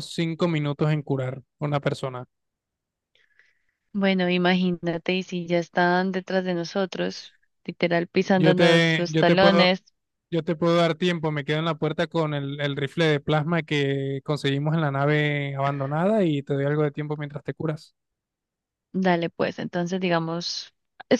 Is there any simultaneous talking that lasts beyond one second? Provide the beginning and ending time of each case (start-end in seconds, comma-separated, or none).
8.4-9.7